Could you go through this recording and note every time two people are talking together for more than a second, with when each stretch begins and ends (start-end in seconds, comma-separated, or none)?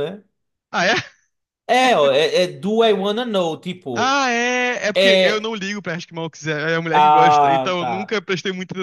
6.9-8.2